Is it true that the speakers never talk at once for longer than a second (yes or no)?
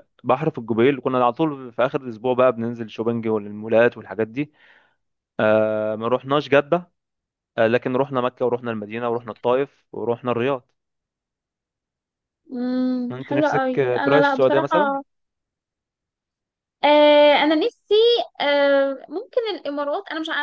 no